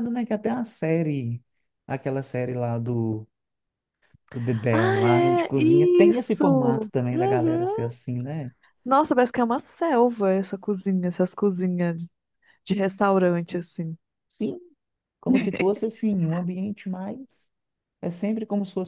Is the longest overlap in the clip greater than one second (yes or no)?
yes